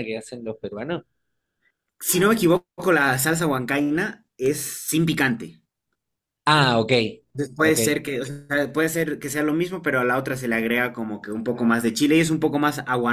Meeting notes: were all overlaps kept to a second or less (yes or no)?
yes